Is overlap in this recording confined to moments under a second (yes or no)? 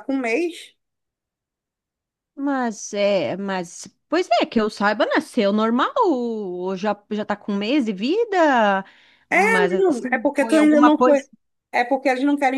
no